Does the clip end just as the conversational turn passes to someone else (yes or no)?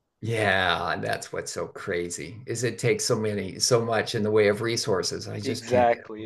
yes